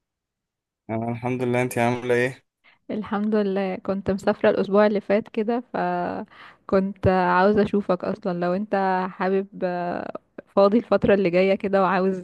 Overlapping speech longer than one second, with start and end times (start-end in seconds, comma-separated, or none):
none